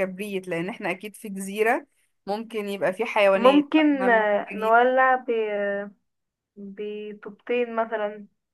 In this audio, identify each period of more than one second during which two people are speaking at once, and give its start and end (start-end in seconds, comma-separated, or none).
3.3-4.7